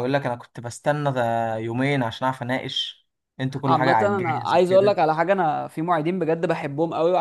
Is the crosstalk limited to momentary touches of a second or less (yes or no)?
no